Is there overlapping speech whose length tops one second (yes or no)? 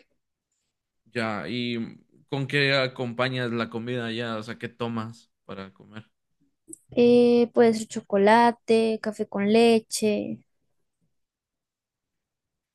no